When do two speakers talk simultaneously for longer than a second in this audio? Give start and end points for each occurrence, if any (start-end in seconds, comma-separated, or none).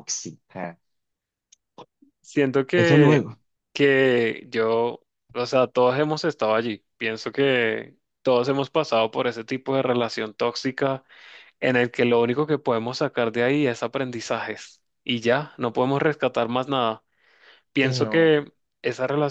none